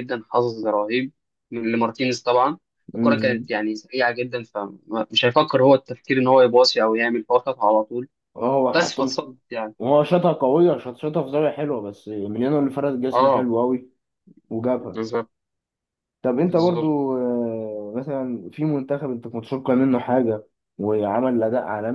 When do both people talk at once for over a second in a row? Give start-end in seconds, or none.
none